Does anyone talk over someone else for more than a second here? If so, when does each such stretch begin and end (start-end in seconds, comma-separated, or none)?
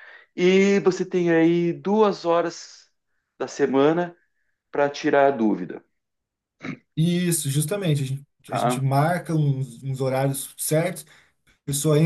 none